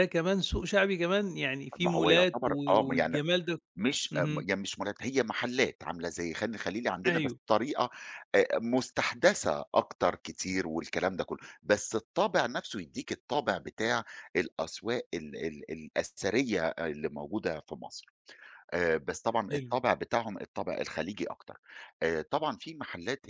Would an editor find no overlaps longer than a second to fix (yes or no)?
no